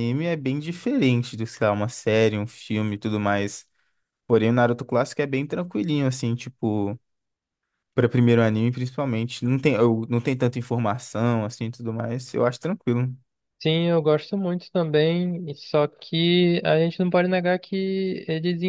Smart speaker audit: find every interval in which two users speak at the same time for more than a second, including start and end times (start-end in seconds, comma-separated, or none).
none